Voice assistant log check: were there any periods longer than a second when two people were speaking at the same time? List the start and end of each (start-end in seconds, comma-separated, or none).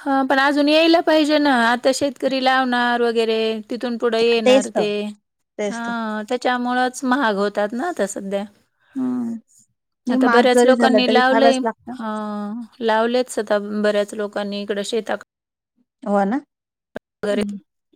10.1-11.6